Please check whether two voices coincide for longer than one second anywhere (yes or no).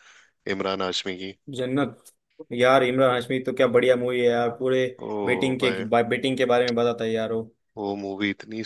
no